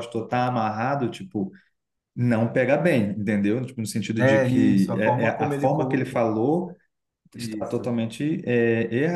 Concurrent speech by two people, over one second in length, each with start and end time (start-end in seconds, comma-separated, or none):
4.2-6.2